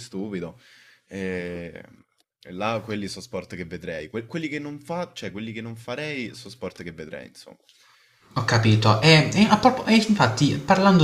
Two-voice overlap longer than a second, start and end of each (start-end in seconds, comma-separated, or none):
none